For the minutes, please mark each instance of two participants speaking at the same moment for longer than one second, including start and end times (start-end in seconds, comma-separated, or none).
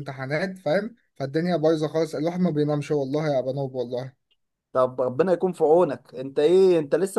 none